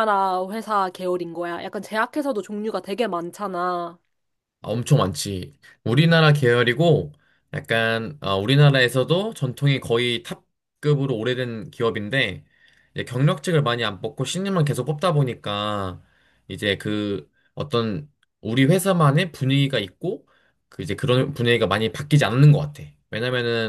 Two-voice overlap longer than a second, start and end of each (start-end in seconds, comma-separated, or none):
none